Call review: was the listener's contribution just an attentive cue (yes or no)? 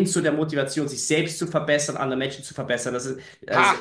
no